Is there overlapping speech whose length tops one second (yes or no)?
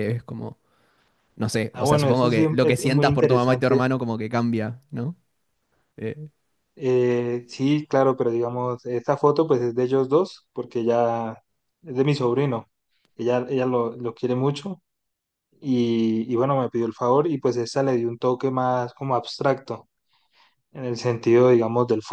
yes